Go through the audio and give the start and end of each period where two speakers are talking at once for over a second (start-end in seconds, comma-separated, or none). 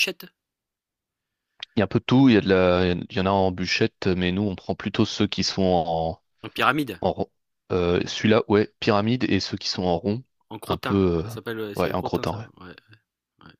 10.7-12.4